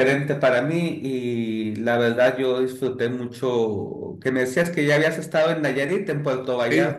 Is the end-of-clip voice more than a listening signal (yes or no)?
yes